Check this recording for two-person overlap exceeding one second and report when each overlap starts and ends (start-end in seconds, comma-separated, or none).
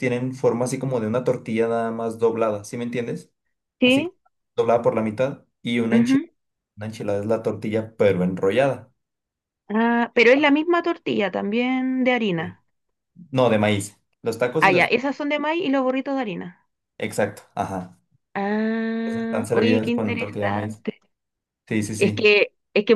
19.0-20.8